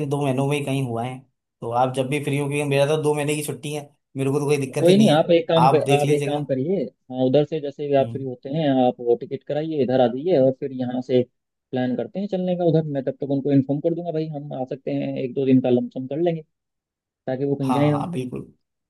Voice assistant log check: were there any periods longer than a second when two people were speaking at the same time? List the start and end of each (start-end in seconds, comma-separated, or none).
4.7-6.5